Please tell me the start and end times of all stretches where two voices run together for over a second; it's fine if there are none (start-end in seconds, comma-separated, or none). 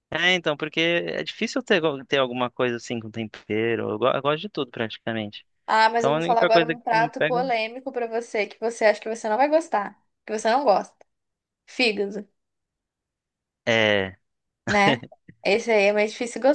6.0-7.4